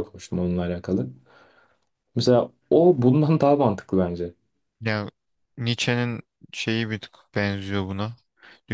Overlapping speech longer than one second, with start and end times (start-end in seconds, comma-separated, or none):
none